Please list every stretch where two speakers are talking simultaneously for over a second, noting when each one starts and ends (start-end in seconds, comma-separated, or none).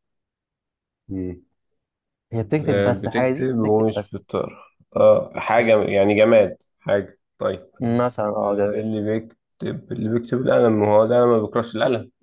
2.6-4.2